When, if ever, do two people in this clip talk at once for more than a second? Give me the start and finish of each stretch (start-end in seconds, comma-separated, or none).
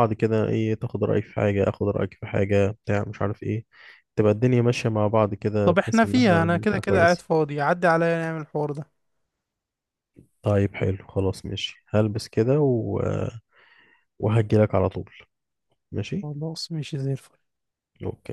5.6-7.3